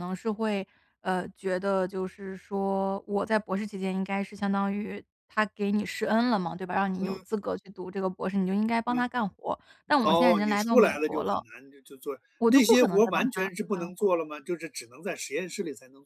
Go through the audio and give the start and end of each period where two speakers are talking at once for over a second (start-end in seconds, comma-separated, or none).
10.1-11.4, 12.4-14.1